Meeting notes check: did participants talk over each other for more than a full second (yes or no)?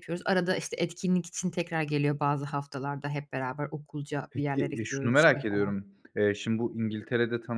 yes